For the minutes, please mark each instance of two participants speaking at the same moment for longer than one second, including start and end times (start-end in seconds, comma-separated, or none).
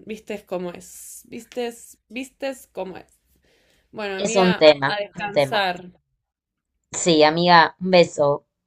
4.2-5.6